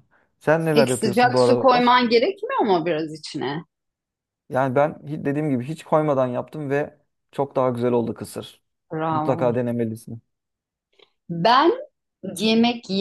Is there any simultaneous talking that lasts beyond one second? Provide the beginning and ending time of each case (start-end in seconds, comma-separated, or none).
0.7-1.9